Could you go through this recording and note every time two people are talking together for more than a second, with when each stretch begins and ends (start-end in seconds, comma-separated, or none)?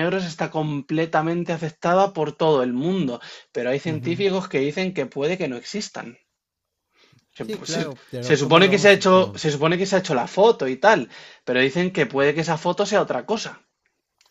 7.4-9.4